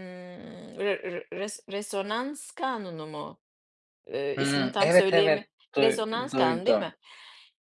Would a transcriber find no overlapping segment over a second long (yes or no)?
no